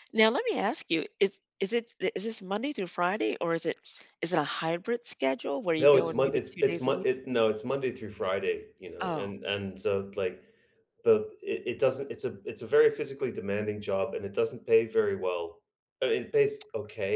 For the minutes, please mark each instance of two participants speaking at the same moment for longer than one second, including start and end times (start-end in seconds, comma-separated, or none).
5.8-7.1